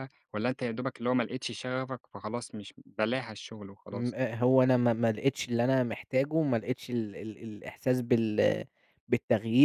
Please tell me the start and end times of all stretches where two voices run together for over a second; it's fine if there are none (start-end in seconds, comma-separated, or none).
none